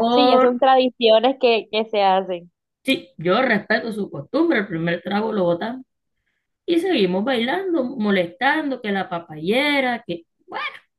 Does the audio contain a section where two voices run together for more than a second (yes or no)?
no